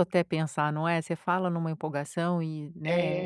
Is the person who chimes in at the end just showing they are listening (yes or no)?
no